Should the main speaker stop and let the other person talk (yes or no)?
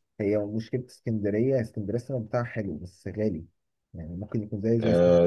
yes